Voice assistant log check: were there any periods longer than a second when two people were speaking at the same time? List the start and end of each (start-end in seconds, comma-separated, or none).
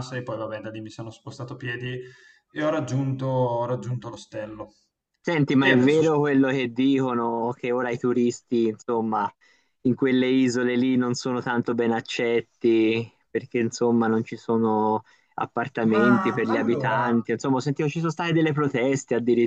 15.8-17.1